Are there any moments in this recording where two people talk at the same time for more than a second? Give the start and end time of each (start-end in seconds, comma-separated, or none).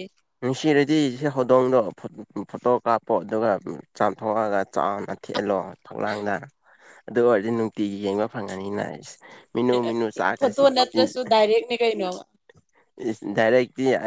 none